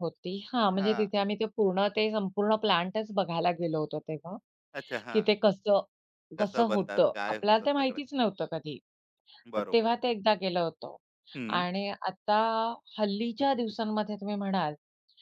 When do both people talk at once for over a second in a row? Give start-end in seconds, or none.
6.4-8.0